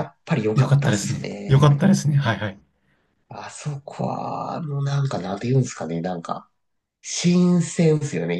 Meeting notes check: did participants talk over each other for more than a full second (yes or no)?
yes